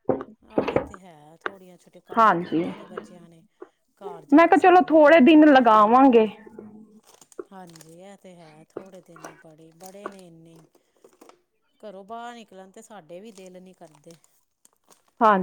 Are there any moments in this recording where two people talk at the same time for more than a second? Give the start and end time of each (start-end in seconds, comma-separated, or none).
4.3-6.0